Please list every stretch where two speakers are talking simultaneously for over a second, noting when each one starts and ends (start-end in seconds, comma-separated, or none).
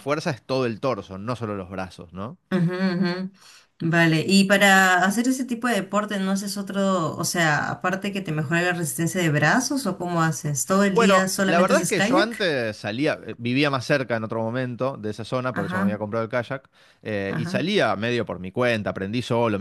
10.9-12.5